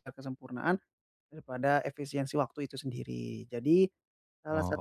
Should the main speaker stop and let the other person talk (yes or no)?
no